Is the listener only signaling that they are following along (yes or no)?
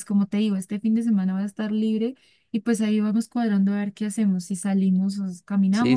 no